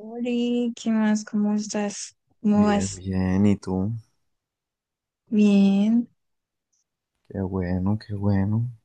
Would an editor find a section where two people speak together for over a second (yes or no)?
no